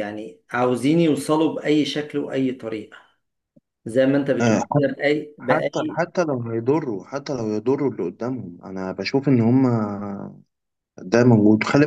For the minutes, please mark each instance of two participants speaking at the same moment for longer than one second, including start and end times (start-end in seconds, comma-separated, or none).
none